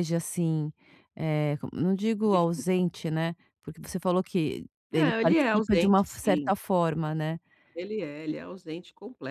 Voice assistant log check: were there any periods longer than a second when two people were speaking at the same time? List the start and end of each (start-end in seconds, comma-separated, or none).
4.9-6.5